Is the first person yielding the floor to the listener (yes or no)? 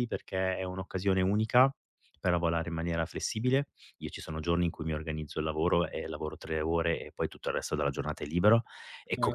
no